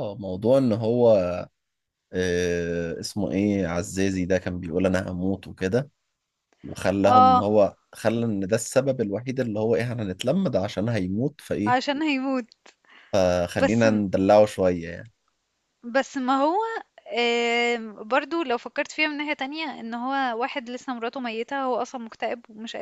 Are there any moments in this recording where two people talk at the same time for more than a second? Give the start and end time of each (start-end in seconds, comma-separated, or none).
none